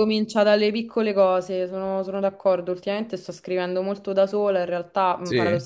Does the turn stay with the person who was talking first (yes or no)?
yes